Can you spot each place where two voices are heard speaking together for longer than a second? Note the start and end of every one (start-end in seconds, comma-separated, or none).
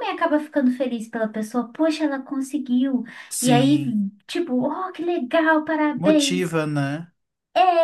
none